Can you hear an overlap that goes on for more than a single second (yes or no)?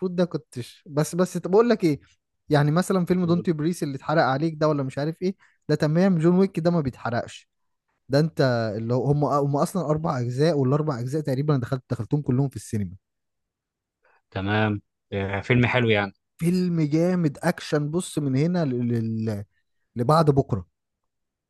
no